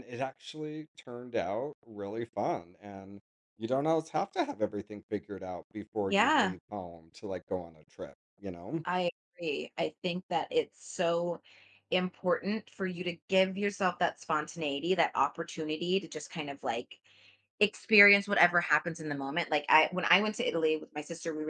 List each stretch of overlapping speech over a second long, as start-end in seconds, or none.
none